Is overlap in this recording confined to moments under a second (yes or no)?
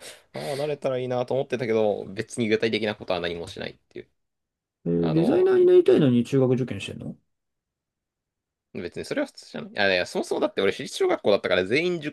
yes